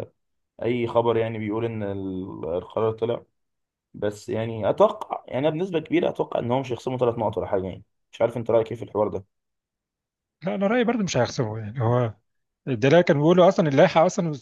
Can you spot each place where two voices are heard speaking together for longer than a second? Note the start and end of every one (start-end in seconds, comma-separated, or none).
none